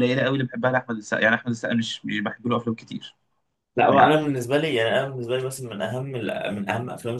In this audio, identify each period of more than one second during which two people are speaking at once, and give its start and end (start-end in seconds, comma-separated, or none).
none